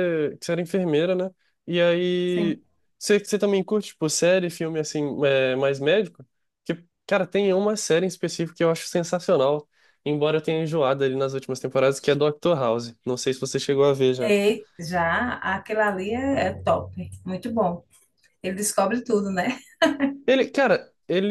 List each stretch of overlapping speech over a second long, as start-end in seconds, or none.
none